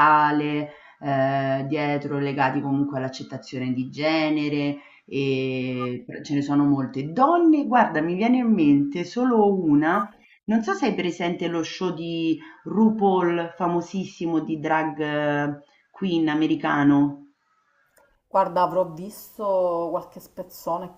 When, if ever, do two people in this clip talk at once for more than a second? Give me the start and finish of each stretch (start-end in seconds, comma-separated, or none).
none